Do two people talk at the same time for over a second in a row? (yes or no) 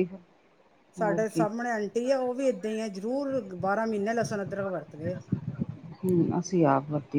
no